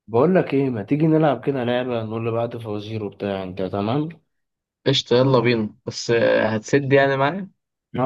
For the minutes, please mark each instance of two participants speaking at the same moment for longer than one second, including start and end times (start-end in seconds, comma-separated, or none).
none